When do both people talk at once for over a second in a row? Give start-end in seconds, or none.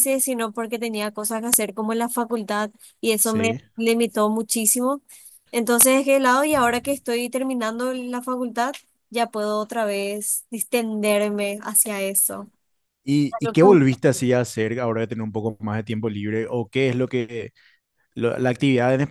none